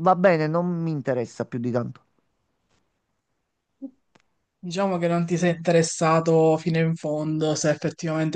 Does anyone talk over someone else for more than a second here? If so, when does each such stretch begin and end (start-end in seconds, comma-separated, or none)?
none